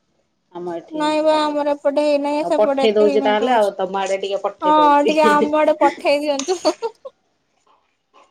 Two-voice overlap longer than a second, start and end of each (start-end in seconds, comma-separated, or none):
1.0-3.7